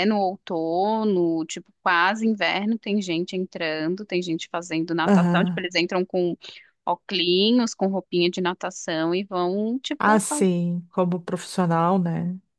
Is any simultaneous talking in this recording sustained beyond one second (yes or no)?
no